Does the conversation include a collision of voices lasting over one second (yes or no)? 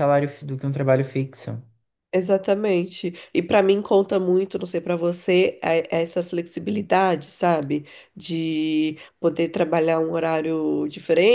no